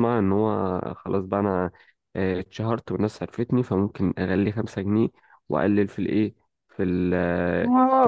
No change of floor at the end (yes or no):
no